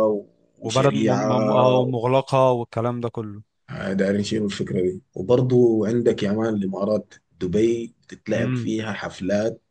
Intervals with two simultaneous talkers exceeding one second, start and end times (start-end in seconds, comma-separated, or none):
0.6-1.8